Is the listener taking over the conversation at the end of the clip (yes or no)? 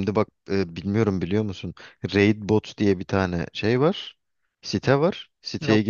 no